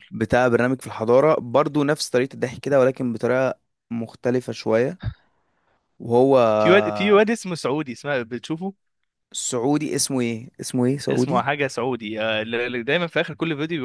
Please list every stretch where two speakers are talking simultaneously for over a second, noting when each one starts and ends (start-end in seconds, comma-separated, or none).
none